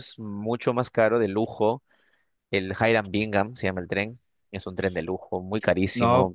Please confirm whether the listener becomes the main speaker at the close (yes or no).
yes